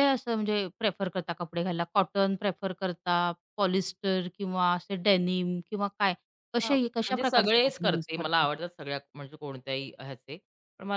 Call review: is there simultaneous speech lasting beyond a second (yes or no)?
yes